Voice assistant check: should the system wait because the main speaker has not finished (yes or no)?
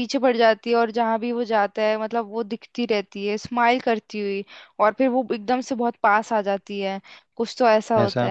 yes